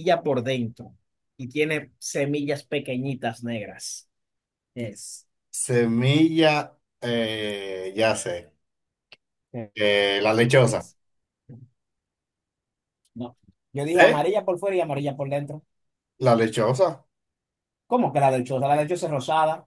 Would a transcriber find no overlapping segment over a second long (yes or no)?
yes